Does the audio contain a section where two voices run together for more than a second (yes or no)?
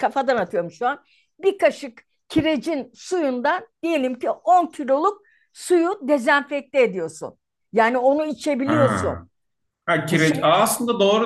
no